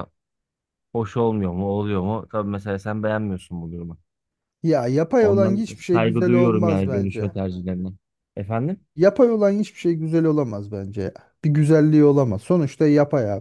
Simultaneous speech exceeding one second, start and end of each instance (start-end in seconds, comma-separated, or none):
5.2-7.3